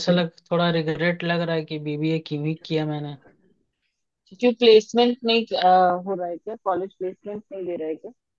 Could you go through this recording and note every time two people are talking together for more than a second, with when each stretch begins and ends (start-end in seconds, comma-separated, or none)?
none